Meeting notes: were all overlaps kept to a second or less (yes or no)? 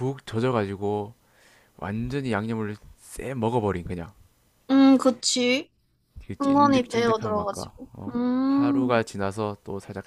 no